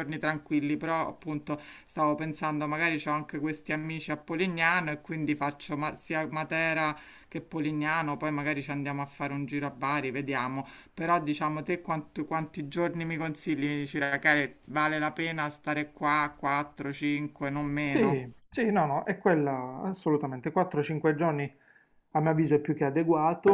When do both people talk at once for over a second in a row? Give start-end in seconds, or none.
none